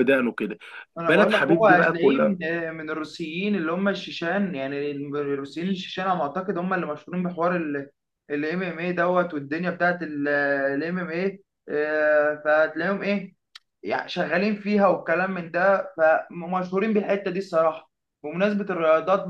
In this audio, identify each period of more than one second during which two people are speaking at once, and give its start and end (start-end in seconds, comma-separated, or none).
1.1-2.4